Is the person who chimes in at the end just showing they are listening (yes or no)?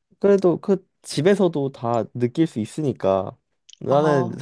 yes